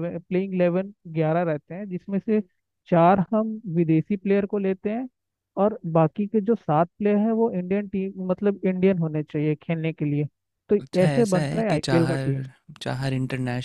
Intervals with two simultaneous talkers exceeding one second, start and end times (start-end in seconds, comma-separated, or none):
10.8-12.4